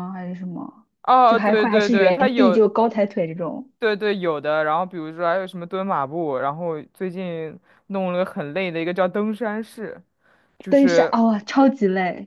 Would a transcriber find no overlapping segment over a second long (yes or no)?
no